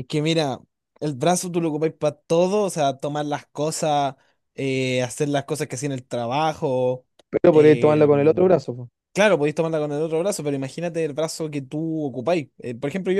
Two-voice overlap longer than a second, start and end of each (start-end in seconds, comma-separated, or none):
none